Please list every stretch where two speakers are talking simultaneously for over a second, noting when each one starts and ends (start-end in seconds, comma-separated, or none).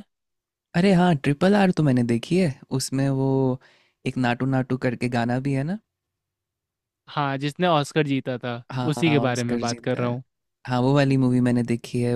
8.7-10.2